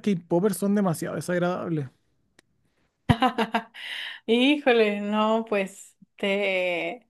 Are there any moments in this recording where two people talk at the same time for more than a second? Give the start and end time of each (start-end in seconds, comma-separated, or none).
none